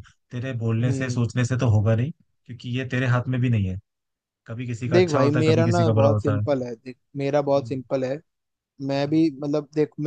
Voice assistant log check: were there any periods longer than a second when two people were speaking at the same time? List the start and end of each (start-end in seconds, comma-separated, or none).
4.9-6.5